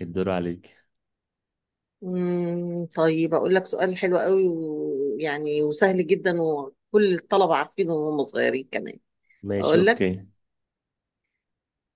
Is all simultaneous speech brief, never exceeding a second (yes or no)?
yes